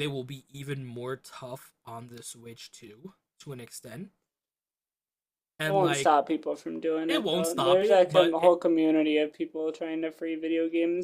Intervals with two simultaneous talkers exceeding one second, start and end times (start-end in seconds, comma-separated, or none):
7.1-8.6